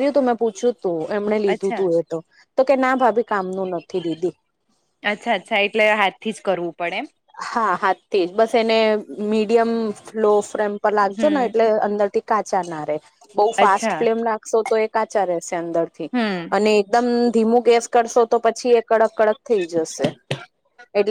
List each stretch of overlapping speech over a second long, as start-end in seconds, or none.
none